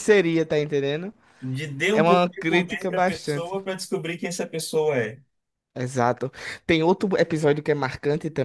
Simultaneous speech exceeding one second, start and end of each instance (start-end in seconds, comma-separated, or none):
1.9-3.5